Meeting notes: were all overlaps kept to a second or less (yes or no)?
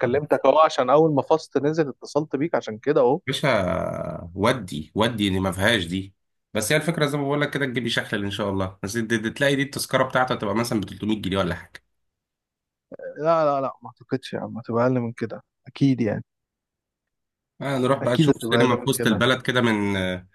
no